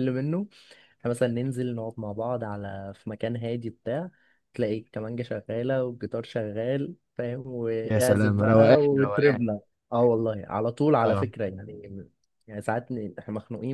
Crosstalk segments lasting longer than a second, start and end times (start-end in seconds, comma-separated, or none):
7.8-9.4